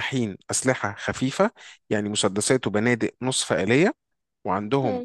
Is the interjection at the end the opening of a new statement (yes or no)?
no